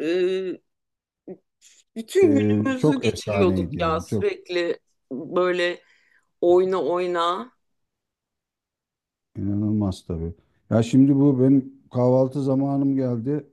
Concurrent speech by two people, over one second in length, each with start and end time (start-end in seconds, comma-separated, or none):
2.2-4.3